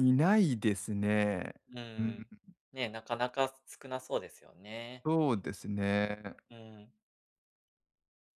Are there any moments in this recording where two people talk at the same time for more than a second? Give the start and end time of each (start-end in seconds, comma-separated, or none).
none